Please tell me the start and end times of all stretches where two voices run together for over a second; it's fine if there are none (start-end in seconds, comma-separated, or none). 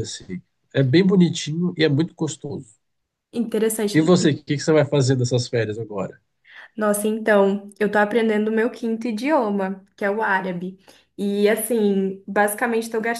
none